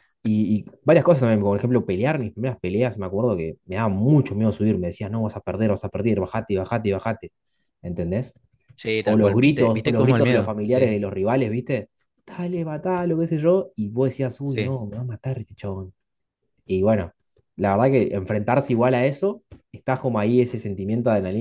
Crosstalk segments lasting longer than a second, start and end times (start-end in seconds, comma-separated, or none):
9.0-10.9